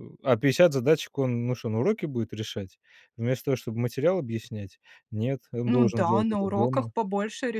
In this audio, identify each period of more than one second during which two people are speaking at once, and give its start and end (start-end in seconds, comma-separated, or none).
5.7-6.9